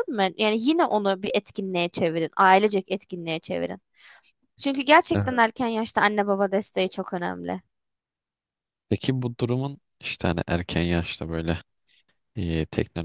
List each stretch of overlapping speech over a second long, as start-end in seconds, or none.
none